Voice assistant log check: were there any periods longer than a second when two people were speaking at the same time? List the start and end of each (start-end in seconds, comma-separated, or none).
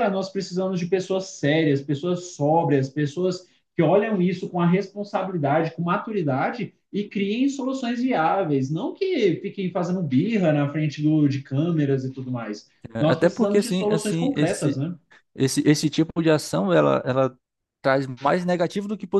12.9-14.8